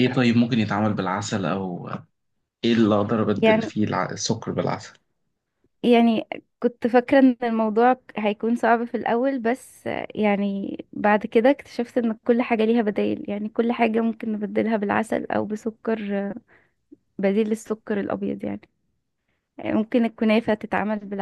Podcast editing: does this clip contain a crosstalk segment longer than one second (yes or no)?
no